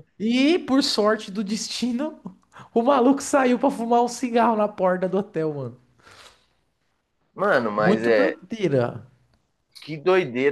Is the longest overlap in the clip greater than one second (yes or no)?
no